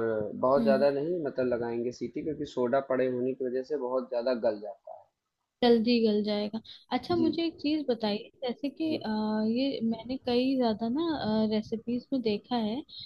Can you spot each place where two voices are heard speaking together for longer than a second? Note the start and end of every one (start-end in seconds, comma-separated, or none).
none